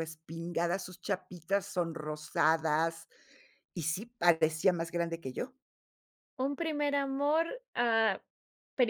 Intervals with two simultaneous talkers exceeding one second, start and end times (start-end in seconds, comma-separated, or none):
none